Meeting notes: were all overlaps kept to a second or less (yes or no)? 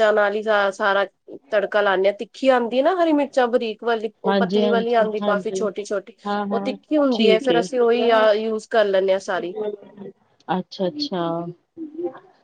no